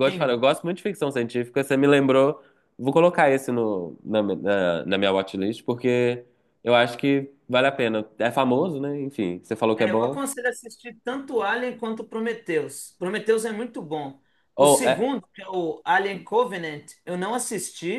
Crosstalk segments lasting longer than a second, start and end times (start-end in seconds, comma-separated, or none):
none